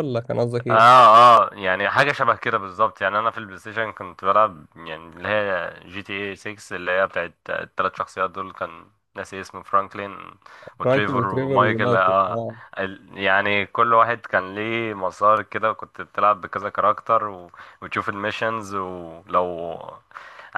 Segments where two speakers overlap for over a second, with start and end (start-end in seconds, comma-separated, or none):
10.8-12.2